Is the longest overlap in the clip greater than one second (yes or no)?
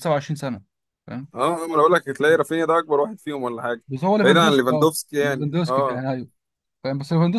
yes